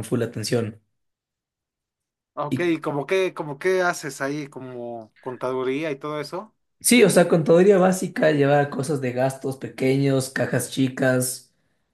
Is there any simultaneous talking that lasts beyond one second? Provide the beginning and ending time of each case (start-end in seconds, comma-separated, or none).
none